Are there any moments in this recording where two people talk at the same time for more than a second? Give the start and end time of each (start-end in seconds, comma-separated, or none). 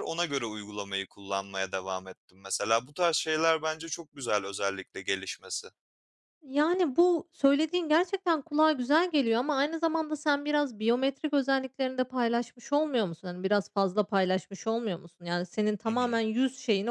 none